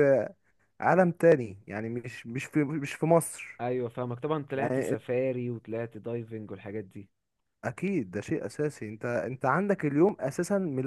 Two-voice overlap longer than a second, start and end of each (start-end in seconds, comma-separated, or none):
none